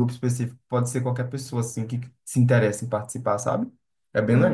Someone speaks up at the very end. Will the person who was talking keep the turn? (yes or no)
no